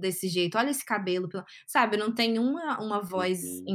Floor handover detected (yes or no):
no